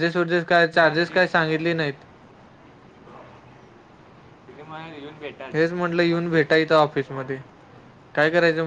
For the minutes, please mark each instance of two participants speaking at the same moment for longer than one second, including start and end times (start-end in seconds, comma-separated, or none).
none